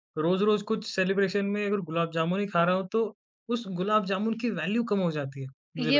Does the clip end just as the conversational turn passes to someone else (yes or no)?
yes